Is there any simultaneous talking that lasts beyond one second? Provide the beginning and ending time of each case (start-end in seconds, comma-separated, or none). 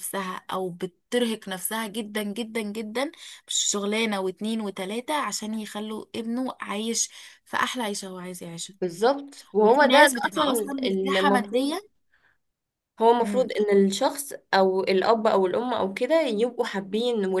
9.6-11.8